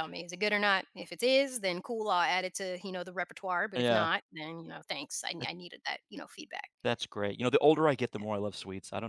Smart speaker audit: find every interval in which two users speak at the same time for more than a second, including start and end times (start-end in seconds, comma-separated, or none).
none